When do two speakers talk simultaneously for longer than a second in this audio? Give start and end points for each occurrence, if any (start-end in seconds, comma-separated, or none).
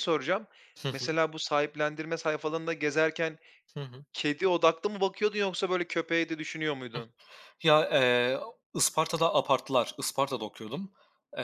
none